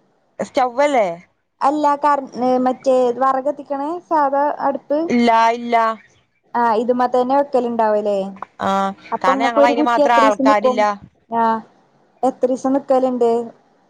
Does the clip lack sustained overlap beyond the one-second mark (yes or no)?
no